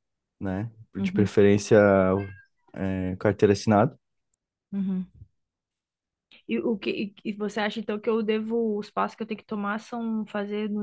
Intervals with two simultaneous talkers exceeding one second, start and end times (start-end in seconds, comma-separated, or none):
none